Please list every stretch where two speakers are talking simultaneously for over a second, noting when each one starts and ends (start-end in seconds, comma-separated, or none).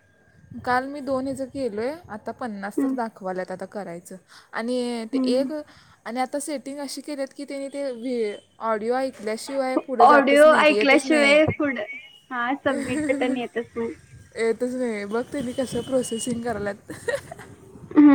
10.0-11.4